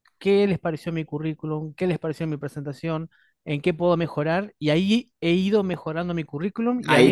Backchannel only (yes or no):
no